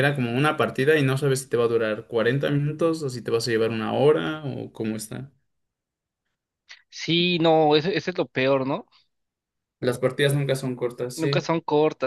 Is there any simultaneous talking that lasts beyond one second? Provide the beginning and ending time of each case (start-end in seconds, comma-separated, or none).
none